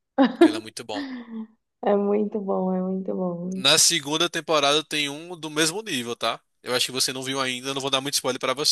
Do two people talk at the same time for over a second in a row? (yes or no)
no